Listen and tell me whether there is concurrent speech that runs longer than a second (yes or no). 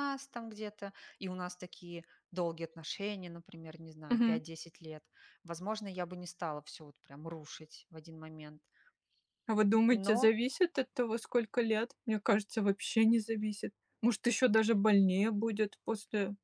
no